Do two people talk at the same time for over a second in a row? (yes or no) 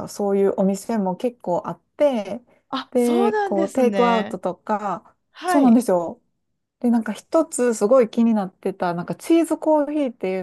yes